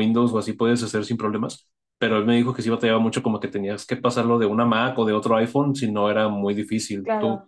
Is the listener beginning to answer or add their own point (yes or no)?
no